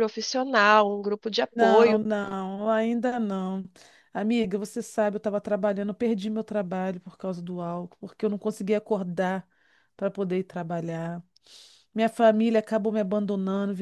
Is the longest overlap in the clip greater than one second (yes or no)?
no